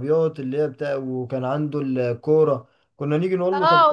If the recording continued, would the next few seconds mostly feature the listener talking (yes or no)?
yes